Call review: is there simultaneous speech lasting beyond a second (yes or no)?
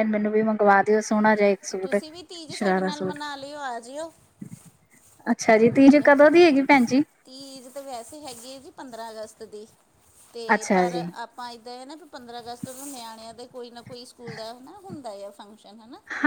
no